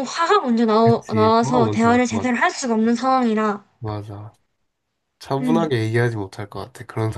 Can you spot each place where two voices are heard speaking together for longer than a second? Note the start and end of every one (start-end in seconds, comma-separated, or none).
0.8-2.5